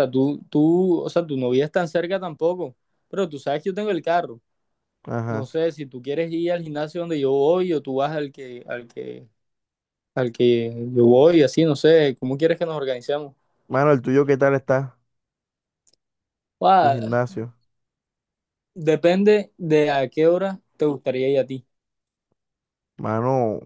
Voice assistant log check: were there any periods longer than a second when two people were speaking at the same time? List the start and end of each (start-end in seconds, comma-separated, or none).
none